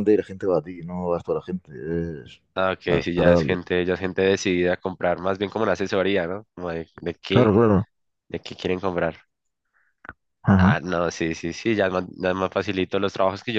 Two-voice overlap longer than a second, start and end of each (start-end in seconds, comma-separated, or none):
none